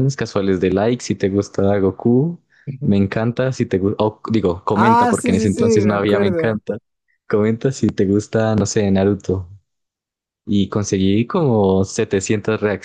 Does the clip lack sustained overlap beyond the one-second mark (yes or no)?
no